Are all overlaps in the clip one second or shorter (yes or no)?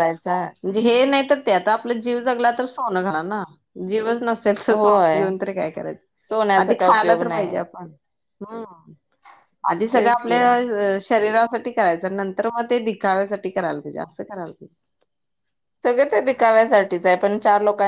no